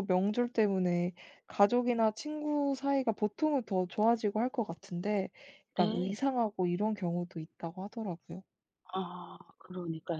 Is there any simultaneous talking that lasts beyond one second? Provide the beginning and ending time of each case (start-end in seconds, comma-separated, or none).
none